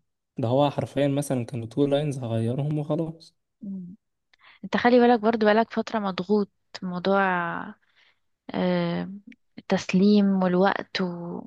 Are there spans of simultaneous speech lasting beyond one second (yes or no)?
no